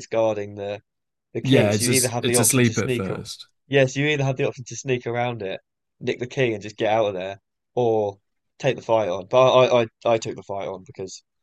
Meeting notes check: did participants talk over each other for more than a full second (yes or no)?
yes